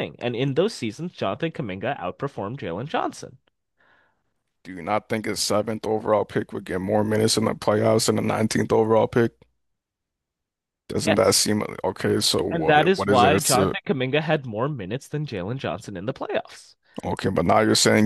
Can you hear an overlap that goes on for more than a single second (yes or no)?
yes